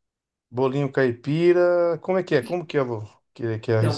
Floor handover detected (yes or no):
yes